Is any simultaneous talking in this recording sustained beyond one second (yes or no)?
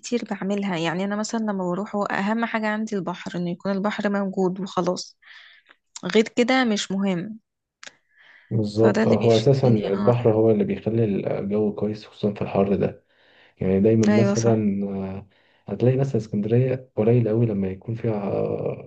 yes